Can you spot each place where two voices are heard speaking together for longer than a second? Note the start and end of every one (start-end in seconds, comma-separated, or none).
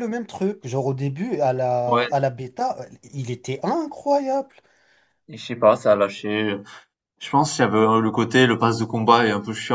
none